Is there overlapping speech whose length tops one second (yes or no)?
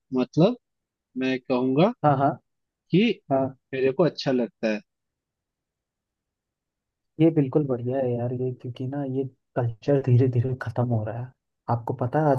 no